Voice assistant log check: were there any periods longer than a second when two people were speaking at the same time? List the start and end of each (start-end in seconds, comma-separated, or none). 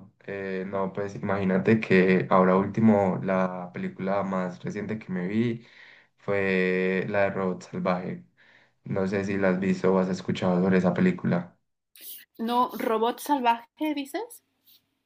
none